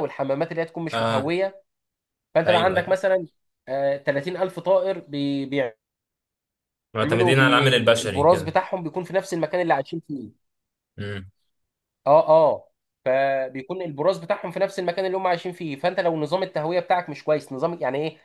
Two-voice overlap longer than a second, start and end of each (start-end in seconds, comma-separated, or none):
7.0-8.5